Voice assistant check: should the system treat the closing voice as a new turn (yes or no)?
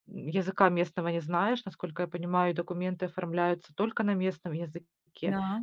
no